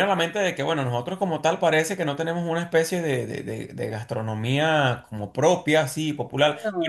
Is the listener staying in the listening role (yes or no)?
yes